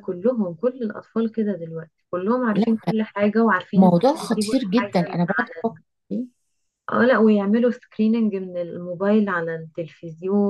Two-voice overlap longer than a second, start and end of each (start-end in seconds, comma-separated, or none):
3.8-5.2